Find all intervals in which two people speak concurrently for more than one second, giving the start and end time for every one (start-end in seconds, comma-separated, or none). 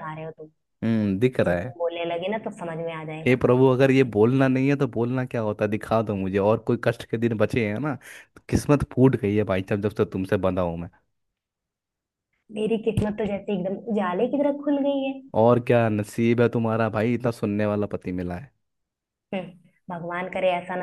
none